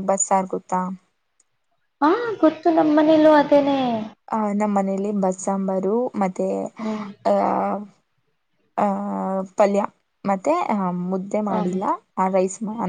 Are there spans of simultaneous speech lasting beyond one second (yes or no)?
no